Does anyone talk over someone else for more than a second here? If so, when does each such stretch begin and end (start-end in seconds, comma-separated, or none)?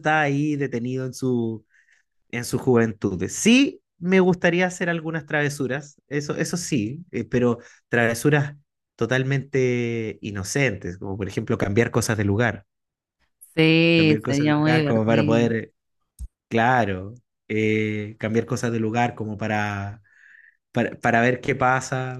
13.9-15.5